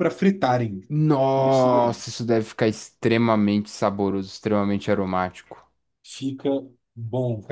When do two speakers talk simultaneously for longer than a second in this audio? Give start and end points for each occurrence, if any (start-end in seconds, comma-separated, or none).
none